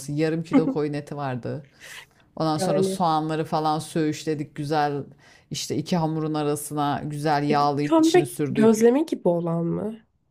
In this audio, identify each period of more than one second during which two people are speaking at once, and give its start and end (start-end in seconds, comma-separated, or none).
7.5-8.9